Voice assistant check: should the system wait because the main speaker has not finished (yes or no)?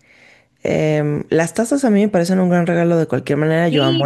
no